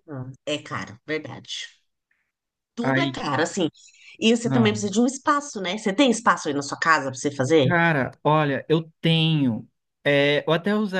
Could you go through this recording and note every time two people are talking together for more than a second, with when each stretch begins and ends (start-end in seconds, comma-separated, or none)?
none